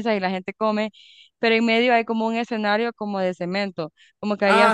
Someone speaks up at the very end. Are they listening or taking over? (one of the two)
taking over